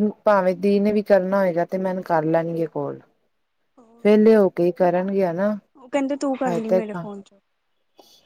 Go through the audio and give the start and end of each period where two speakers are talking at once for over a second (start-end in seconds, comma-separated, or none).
none